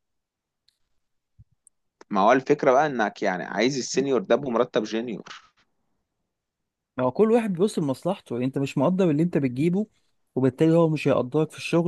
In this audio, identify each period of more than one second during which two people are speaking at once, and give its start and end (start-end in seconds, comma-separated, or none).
none